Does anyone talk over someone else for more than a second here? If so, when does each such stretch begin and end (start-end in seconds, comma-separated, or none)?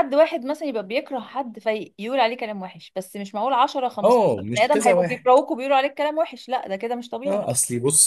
4.0-5.3